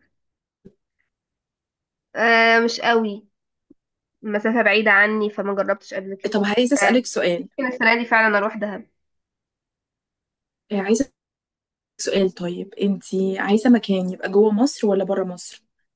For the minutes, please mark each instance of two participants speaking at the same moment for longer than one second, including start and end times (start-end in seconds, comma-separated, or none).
none